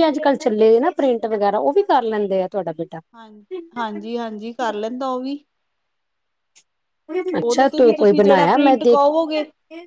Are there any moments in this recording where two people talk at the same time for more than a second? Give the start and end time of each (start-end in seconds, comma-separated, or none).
7.5-9.1